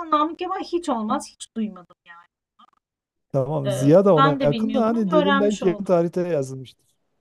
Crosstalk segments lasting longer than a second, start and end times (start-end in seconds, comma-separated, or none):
3.6-5.9